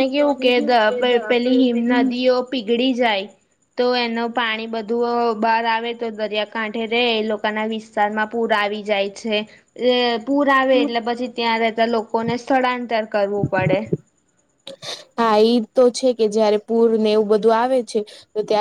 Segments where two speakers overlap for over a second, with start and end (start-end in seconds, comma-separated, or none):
0.6-2.1